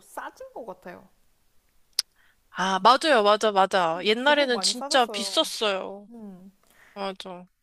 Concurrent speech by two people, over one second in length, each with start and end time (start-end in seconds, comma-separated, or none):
3.9-5.5